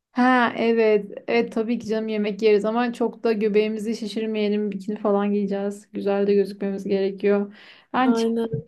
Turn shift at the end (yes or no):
no